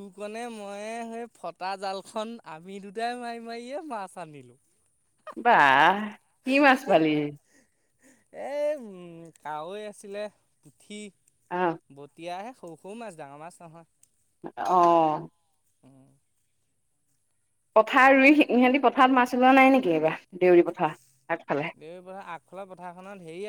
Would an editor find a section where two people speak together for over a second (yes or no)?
no